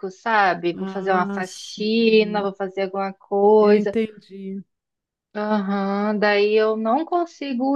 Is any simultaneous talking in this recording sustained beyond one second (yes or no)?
yes